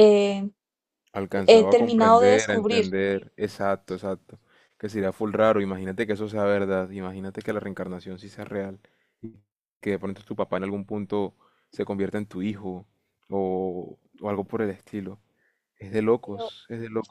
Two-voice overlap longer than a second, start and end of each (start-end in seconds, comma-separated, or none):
1.5-2.9